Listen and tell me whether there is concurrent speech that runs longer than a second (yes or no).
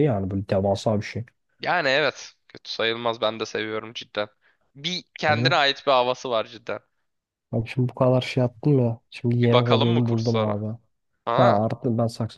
yes